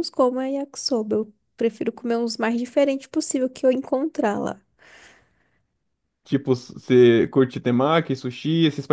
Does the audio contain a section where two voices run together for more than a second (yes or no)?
no